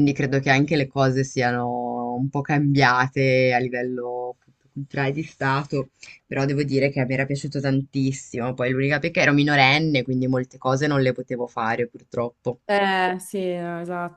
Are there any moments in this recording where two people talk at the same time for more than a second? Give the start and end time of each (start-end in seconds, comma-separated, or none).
none